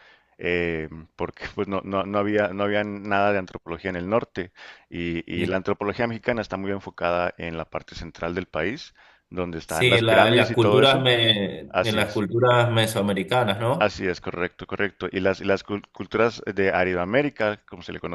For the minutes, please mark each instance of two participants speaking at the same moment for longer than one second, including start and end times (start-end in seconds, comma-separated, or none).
9.7-11.1